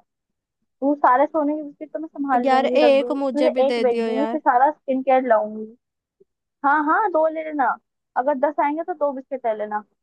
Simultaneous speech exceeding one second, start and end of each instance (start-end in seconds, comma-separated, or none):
2.4-4.4